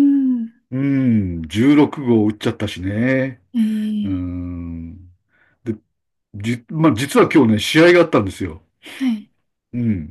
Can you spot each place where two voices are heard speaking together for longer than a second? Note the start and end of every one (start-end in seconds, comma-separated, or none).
none